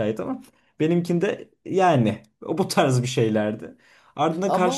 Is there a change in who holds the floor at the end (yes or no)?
no